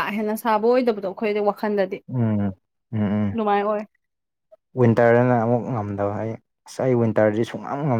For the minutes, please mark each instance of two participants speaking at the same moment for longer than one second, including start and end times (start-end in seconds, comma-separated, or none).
none